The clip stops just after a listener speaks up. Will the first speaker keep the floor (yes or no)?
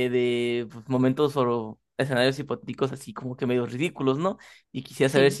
yes